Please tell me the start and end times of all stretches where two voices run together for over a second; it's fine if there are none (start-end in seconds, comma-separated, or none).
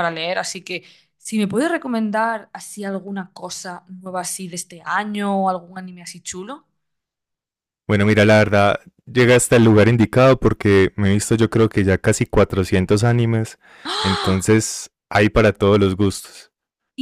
none